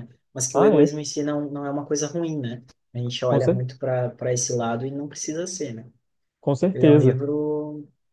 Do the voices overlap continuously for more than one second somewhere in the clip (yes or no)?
no